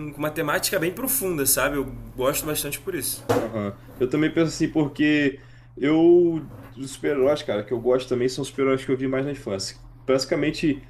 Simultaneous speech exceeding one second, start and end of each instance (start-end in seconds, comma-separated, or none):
none